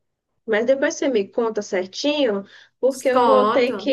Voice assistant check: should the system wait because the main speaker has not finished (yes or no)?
yes